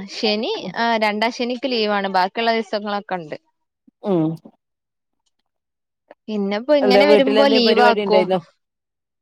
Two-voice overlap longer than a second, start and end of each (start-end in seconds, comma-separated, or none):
6.8-8.2